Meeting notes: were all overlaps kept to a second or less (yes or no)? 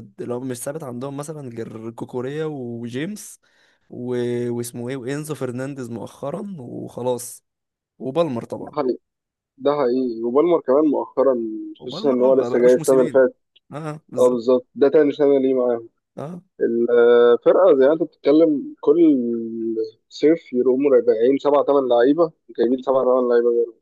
no